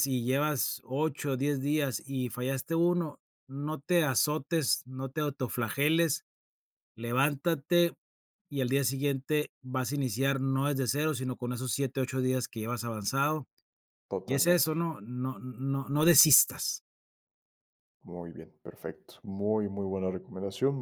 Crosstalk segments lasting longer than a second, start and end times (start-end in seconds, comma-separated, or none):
none